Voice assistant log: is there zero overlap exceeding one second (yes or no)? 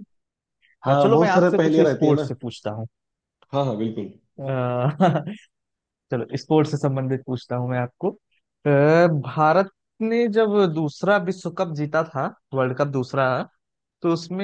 no